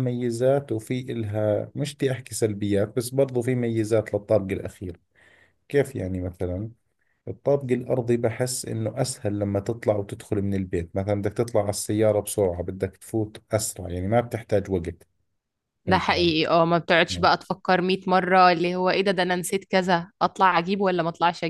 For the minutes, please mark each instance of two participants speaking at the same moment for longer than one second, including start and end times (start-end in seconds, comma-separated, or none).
none